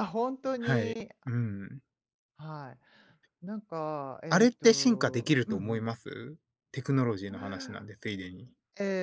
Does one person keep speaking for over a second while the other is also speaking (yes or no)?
yes